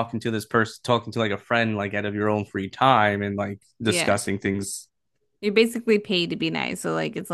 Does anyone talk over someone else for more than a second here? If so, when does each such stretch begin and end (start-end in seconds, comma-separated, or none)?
none